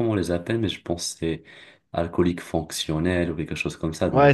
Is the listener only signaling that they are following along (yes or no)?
no